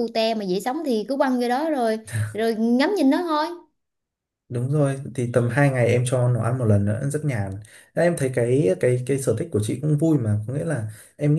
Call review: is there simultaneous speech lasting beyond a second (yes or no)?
no